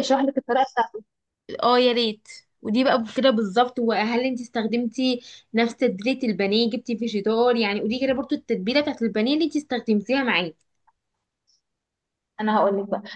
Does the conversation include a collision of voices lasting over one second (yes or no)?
no